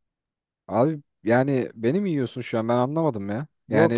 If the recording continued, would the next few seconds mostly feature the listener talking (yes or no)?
yes